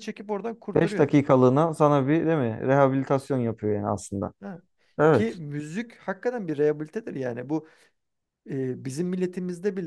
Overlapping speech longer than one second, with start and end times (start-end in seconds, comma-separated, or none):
none